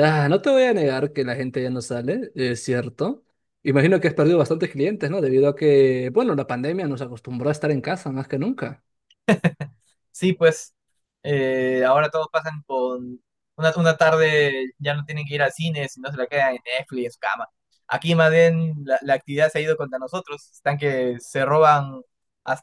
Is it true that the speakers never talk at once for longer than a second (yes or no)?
yes